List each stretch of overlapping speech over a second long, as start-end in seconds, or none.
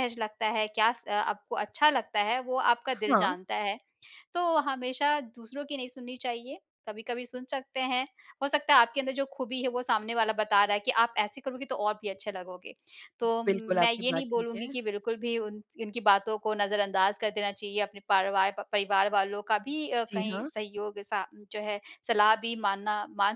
13.5-14.7